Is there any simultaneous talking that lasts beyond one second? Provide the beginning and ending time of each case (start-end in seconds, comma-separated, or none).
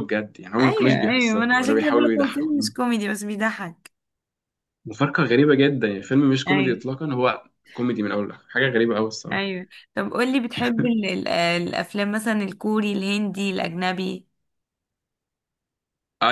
0.6-2.7